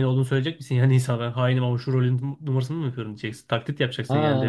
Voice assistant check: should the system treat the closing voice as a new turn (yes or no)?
yes